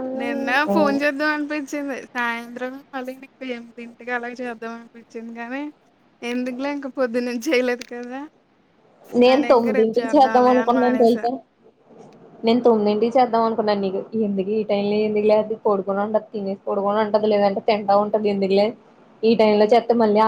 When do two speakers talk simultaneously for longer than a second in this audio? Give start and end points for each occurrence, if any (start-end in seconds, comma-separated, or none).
9.3-11.2